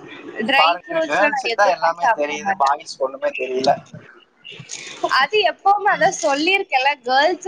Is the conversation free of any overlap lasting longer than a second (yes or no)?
no